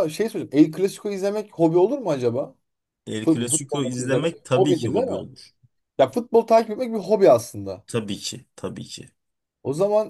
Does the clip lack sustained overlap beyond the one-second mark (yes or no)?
no